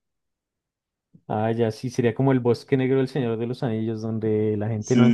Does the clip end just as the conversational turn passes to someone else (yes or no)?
yes